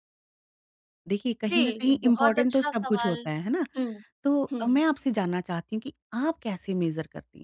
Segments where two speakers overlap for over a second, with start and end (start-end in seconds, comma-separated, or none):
1.5-3.2